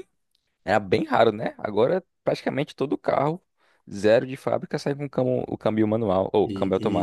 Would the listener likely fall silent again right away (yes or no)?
no